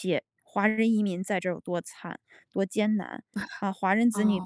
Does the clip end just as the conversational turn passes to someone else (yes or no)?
no